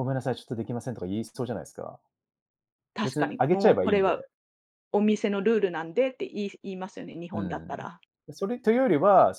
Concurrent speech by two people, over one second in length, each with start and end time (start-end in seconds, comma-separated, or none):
3.0-4.2